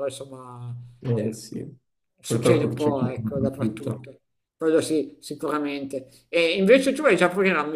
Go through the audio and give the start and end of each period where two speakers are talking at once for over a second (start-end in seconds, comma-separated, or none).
2.2-4.0